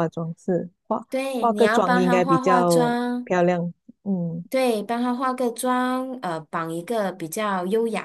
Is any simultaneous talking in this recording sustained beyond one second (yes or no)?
yes